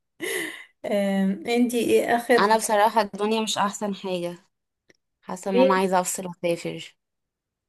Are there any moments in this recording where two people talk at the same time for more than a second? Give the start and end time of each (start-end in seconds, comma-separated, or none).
none